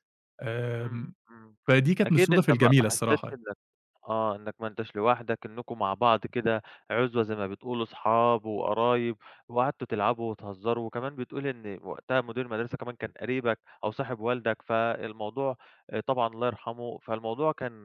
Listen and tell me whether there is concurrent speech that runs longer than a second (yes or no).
yes